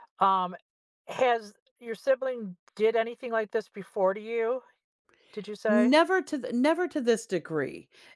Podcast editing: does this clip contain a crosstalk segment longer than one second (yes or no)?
no